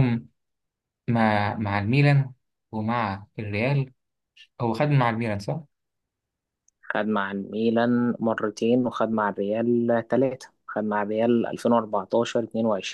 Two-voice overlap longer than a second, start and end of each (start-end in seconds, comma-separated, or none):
none